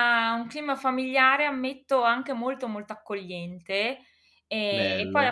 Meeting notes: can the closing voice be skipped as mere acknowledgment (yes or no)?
yes